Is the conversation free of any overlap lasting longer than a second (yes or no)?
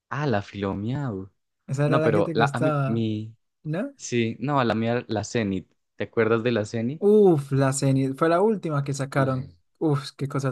no